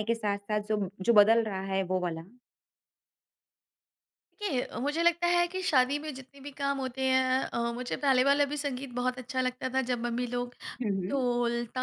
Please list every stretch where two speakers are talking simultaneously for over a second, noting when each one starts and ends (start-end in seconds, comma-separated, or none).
none